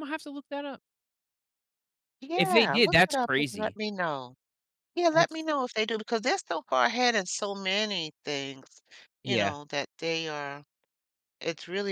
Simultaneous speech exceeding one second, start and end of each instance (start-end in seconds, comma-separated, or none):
2.4-3.8